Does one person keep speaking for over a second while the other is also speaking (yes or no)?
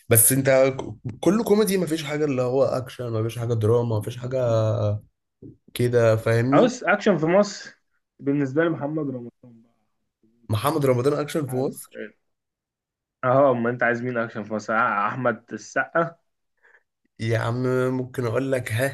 no